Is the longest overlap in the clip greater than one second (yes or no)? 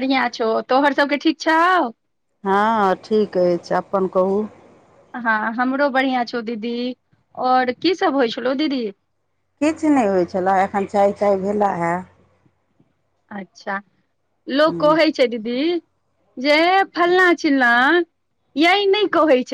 no